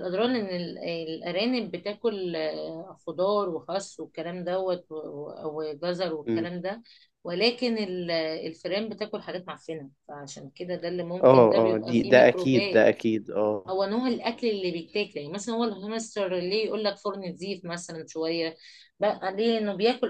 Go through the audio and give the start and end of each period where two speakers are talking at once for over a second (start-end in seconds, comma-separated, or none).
11.2-12.9